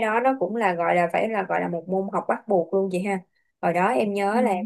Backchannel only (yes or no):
yes